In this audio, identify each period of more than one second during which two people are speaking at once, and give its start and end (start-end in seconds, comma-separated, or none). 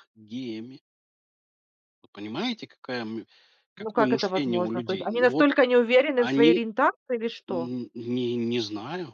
3.8-5.5